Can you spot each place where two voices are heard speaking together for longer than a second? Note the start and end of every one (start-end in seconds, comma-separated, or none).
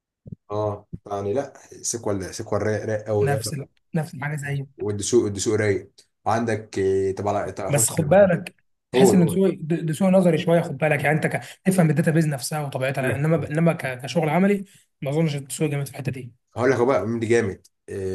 none